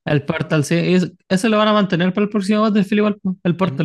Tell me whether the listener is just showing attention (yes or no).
no